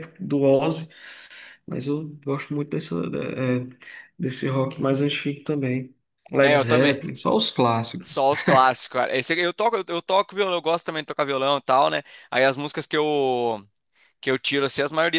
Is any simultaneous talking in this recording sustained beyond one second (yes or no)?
no